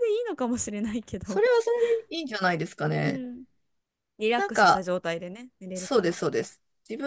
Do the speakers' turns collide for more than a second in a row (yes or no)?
no